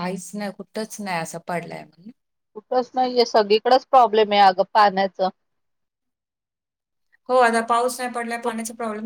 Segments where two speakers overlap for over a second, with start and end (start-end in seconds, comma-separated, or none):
none